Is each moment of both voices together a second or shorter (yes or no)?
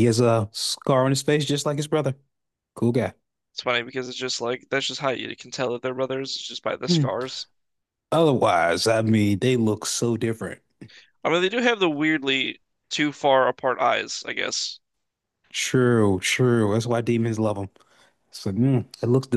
yes